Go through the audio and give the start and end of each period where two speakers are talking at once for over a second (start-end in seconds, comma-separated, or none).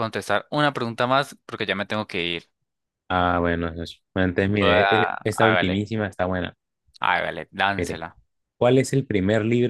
4.6-5.8